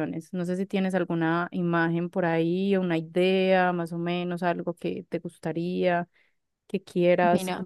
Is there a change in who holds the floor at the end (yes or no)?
yes